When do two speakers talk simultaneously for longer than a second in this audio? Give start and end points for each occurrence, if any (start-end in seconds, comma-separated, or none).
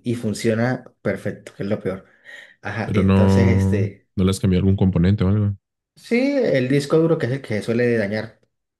2.9-4.1